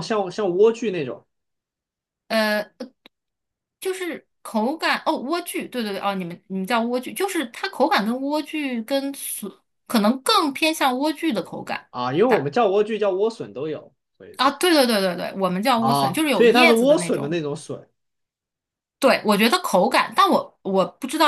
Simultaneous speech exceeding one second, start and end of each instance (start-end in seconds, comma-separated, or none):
15.8-17.4